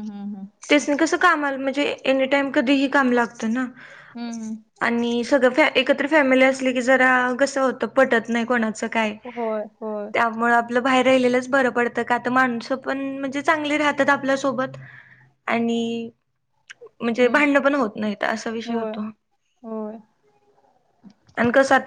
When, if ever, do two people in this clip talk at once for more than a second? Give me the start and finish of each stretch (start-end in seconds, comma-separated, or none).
none